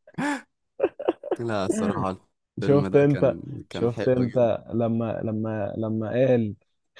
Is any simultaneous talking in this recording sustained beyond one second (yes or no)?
yes